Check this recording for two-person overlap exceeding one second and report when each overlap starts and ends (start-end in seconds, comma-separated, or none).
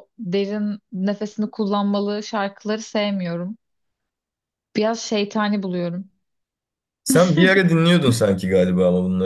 none